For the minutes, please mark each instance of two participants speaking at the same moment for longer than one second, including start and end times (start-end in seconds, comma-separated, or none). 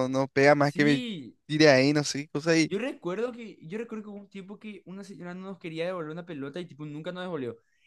none